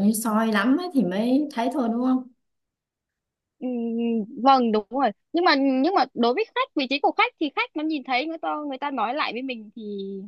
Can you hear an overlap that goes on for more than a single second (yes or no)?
no